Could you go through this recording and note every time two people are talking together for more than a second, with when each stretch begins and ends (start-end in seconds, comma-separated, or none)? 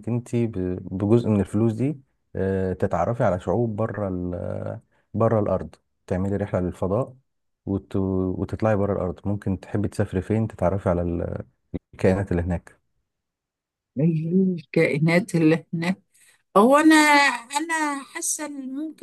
none